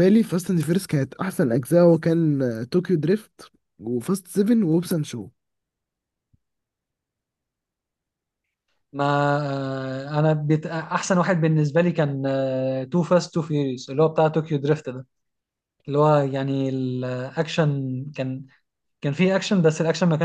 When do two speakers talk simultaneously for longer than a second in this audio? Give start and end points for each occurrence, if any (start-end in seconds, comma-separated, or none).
none